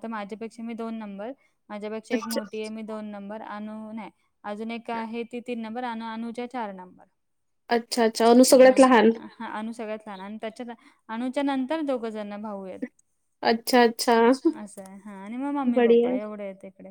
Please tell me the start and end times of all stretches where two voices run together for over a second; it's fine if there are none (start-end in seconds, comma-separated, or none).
none